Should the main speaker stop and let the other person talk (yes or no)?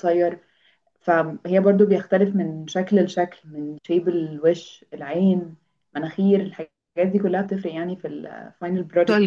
yes